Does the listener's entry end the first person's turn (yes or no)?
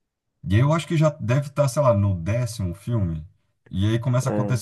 no